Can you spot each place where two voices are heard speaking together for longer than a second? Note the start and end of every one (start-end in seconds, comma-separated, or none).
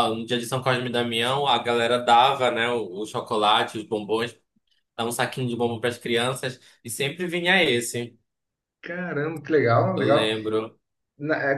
none